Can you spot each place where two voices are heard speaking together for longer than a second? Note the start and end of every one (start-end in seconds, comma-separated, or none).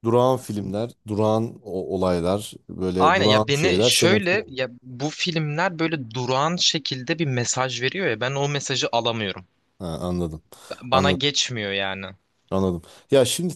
3.0-4.6